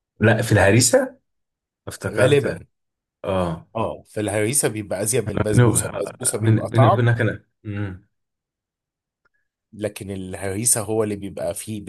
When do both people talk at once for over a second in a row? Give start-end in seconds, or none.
5.5-7.1